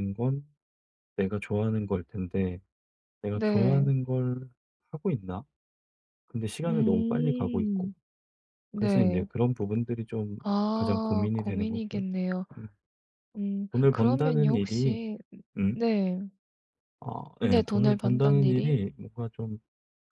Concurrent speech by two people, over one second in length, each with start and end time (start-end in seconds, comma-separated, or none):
6.7-7.9, 10.7-12.0, 13.7-15.0, 17.4-18.8